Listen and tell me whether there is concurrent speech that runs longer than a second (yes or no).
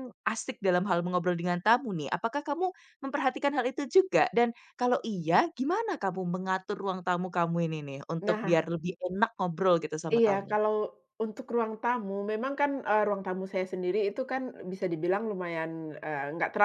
no